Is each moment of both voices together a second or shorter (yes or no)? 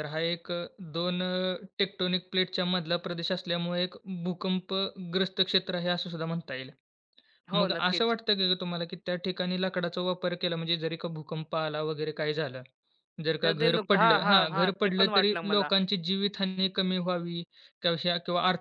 no